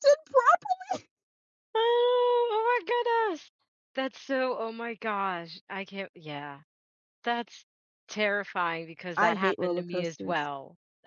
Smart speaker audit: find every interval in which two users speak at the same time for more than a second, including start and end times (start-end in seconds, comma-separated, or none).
9.2-10.5